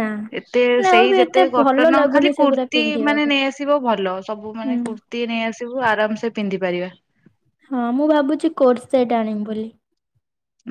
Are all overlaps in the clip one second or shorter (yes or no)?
no